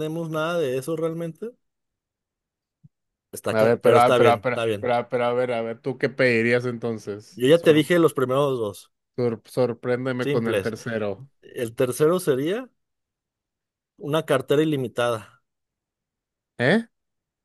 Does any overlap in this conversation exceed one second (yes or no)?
yes